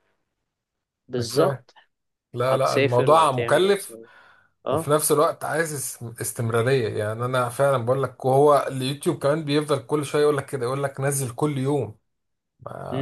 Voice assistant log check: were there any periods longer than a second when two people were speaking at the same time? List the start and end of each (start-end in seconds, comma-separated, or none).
2.5-4.0